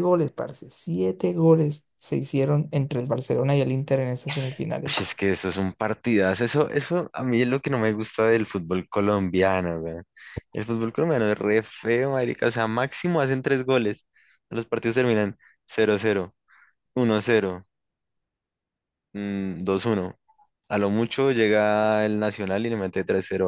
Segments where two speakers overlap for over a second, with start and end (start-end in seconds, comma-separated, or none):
none